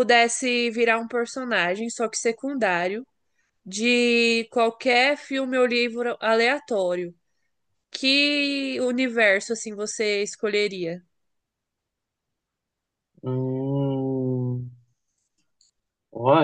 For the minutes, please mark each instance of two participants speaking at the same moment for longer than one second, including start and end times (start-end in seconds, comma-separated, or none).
none